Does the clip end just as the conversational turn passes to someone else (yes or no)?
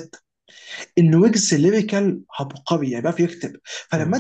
no